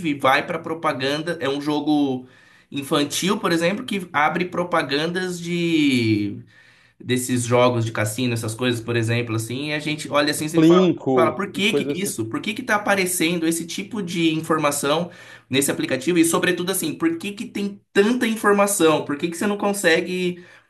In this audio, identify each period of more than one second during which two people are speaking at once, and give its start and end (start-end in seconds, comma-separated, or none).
10.5-12.1